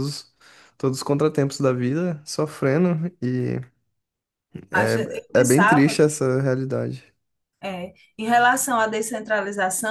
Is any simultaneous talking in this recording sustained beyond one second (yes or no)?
yes